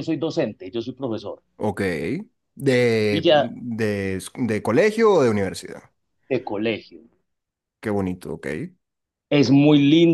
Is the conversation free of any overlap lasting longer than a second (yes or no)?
yes